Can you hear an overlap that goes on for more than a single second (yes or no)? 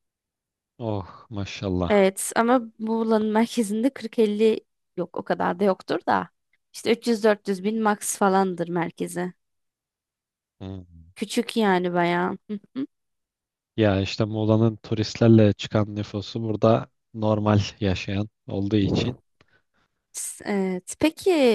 no